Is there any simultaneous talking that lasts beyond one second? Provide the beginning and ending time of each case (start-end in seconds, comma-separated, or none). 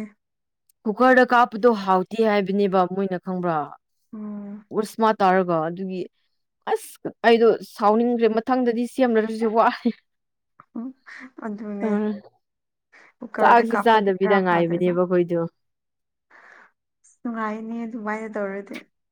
13.4-14.9